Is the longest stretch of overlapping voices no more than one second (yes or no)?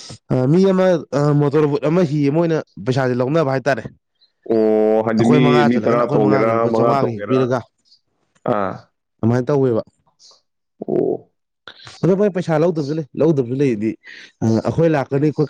no